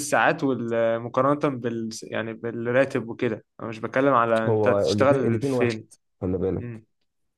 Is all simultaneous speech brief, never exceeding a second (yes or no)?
no